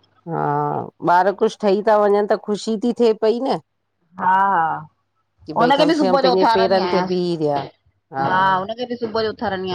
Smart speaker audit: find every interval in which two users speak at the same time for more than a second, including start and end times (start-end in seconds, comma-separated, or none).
5.5-7.6